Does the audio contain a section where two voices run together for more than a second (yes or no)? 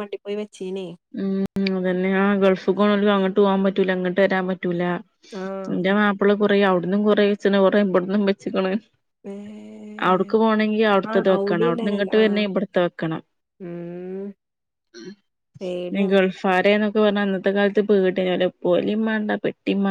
yes